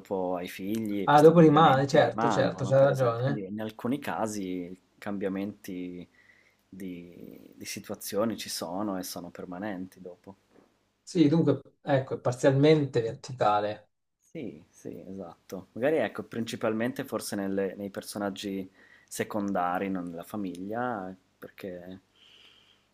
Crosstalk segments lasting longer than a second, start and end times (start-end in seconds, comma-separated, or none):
1.0-3.5